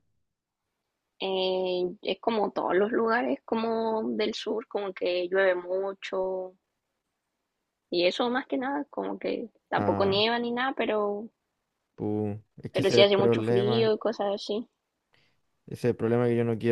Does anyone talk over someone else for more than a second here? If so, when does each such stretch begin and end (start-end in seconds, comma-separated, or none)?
12.7-13.9